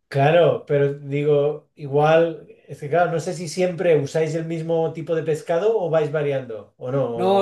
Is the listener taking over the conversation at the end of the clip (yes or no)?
yes